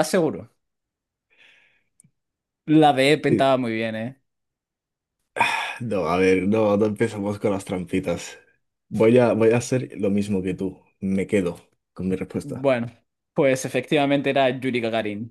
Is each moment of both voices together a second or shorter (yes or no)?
yes